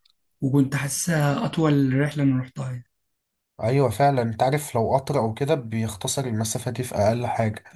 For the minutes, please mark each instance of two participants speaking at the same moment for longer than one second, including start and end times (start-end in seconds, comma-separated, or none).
none